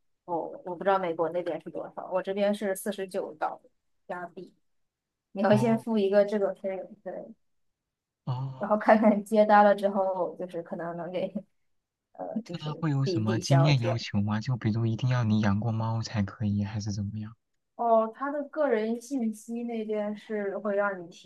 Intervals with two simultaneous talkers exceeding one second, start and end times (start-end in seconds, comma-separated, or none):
12.5-14.0